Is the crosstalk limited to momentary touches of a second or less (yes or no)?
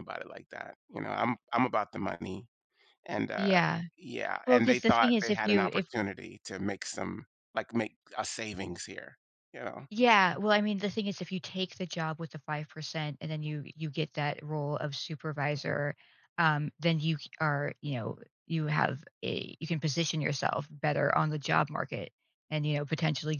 no